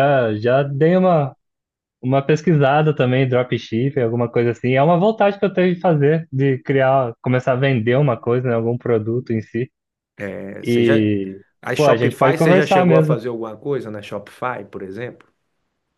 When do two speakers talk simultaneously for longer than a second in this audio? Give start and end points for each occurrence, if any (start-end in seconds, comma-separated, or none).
11.8-13.2